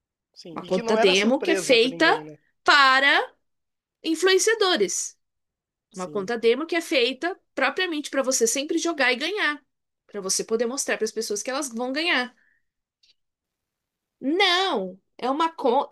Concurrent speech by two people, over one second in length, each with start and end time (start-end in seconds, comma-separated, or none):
0.5-2.0